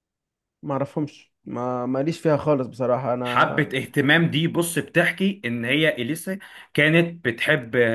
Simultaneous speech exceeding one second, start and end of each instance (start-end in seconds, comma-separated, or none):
none